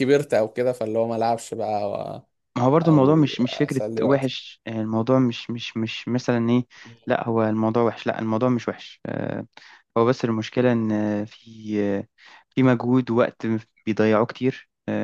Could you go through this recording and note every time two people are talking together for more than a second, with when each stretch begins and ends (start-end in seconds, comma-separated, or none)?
2.8-4.3